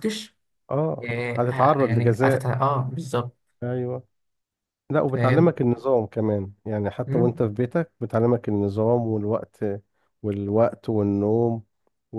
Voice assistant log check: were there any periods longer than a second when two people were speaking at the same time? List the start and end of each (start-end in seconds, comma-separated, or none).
1.0-2.5